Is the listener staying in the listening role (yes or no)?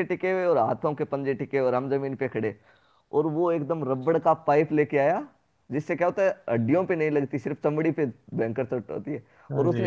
yes